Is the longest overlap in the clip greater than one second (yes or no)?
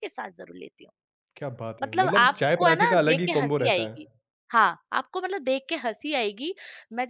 yes